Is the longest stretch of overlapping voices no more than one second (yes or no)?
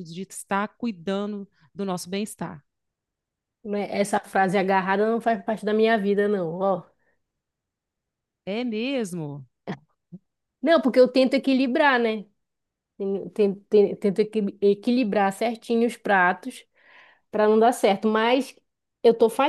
yes